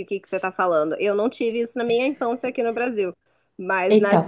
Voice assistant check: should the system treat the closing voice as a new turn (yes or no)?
no